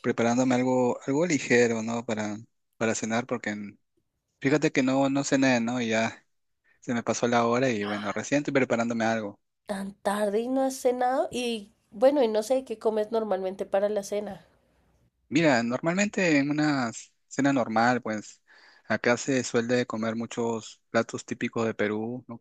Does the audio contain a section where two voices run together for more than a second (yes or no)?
no